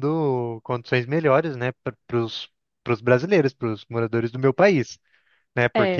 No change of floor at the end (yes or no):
no